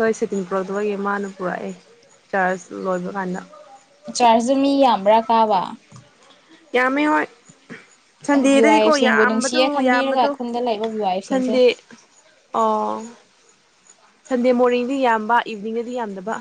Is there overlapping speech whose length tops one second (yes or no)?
yes